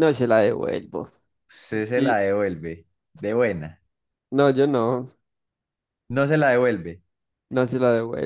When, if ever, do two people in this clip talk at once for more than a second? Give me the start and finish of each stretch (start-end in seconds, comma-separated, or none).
none